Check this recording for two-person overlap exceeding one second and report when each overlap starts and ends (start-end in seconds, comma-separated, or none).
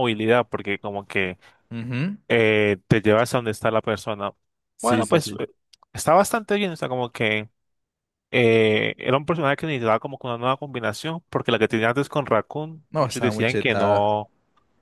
12.9-14.2